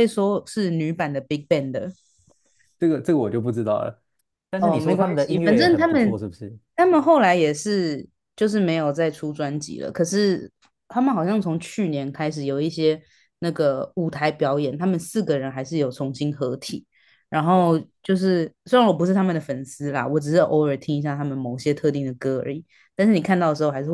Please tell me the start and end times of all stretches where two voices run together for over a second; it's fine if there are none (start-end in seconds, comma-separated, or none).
4.6-6.2